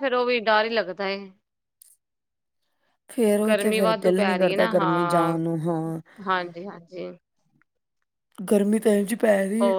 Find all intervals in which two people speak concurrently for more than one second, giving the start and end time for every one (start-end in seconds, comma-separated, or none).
3.5-5.4